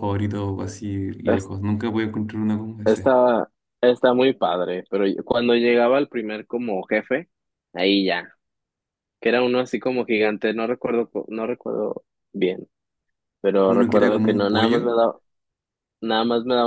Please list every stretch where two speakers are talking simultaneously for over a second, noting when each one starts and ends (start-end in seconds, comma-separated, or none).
13.7-14.9